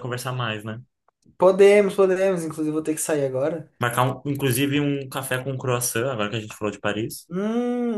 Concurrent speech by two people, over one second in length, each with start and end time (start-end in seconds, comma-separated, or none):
none